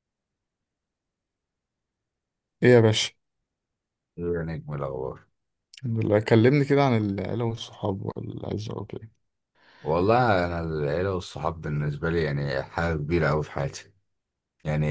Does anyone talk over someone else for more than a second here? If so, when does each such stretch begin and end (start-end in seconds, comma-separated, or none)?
none